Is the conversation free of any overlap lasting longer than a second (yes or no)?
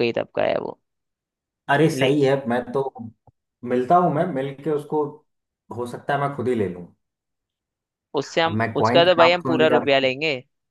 no